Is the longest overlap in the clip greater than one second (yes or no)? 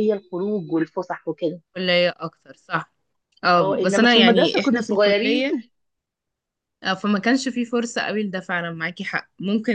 yes